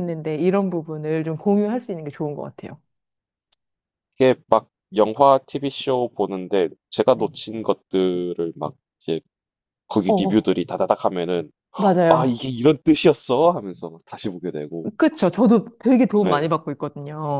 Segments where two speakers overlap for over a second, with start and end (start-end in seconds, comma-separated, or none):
none